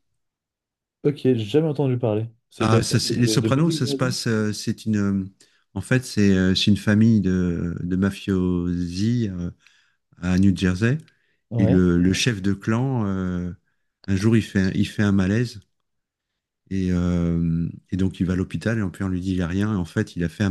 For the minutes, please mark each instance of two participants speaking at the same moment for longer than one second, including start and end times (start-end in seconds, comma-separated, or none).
2.6-4.1